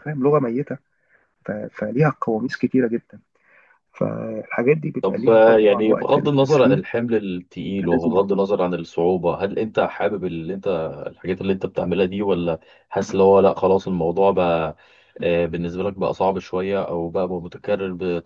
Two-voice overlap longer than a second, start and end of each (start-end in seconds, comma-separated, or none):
5.0-6.8